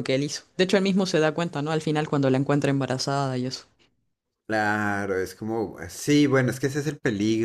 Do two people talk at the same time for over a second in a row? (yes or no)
no